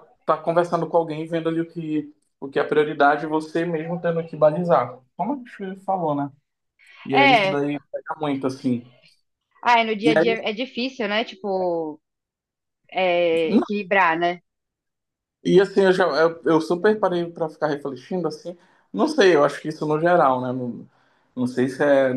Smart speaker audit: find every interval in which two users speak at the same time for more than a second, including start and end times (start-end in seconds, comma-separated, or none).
none